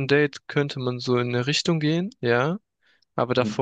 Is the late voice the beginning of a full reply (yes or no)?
no